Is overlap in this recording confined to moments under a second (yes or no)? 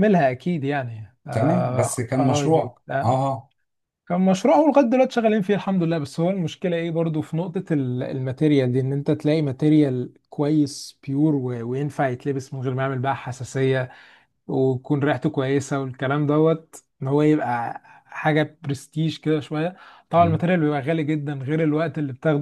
no